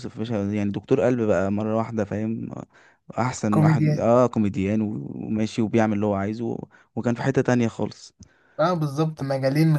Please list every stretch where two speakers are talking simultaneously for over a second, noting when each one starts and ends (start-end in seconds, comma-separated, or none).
none